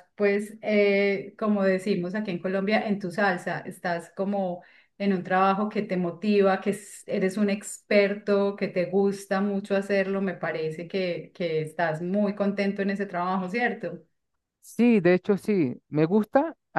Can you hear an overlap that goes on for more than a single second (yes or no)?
no